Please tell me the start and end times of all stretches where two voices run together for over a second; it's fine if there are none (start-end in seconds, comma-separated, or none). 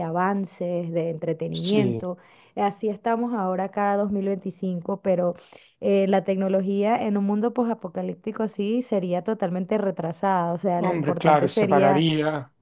10.8-12.0